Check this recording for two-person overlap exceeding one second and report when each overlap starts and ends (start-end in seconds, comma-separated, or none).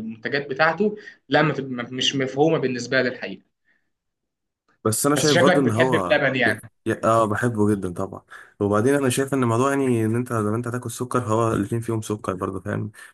5.2-6.6